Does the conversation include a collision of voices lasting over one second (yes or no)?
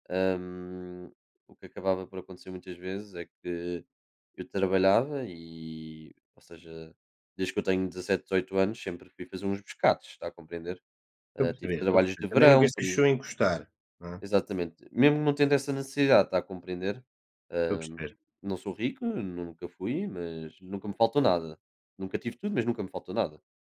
yes